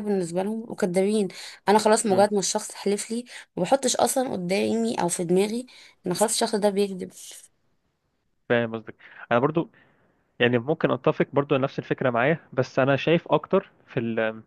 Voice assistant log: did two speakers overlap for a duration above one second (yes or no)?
no